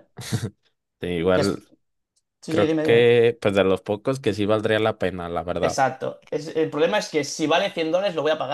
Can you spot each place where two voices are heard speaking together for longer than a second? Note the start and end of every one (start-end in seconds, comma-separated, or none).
none